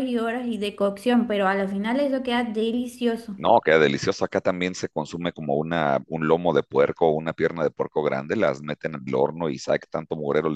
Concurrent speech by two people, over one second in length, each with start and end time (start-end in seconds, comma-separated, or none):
none